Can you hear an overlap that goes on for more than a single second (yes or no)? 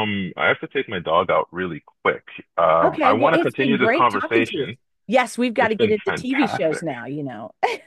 yes